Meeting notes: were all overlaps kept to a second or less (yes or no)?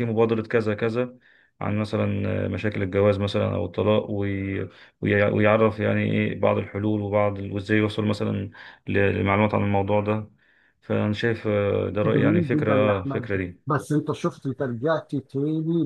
no